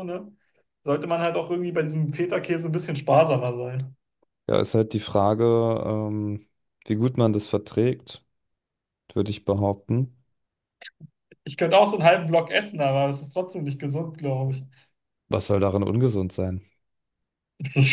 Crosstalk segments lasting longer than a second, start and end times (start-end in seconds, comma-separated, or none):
none